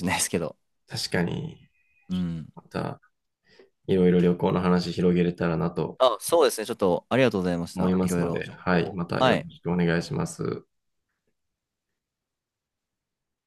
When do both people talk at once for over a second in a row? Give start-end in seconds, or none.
7.7-9.5